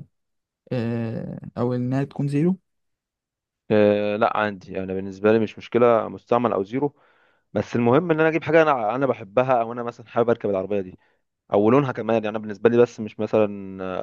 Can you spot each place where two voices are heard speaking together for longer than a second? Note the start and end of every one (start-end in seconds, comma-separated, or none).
none